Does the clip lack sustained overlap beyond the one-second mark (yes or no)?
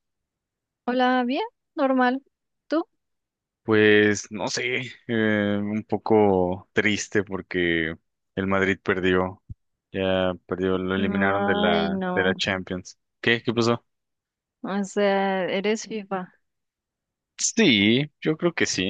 no